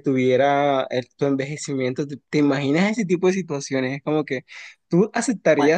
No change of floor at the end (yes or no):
yes